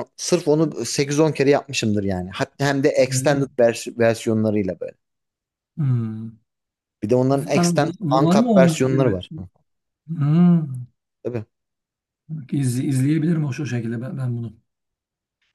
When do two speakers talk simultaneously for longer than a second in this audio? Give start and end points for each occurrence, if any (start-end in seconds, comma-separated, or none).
7.4-9.4